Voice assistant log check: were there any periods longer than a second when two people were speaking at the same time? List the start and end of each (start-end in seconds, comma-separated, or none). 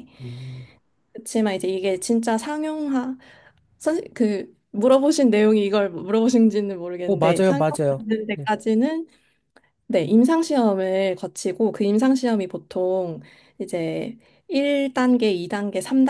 7.0-8.5